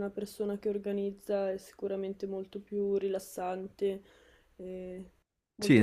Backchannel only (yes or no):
no